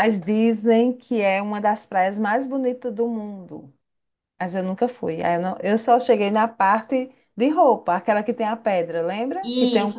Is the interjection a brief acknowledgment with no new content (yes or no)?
no